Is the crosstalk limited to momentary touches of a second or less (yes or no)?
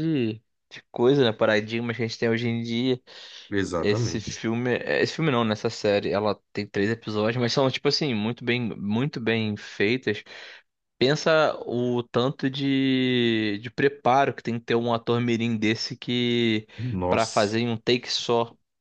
yes